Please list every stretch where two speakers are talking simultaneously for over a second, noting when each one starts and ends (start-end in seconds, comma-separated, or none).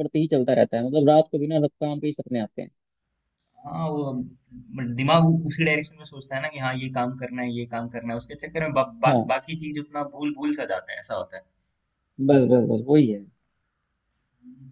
none